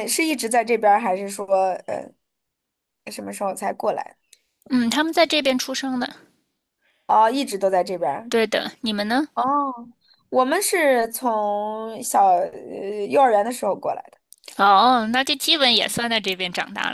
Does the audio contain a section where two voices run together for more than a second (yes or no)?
no